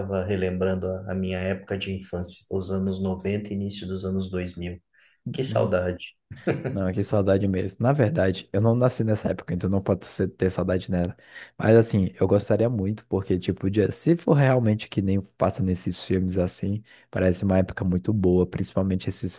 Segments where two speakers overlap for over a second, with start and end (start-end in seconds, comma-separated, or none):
none